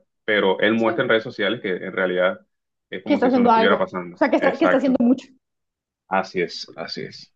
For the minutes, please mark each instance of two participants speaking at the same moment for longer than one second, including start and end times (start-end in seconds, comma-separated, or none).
3.0-5.0